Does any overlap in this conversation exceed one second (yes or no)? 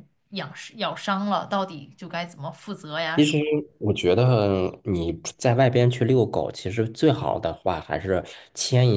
no